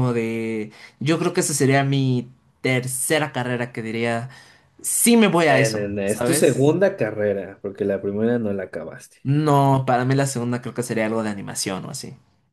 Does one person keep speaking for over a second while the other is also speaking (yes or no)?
yes